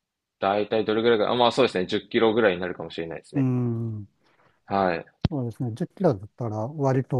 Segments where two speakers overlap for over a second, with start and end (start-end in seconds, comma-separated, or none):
none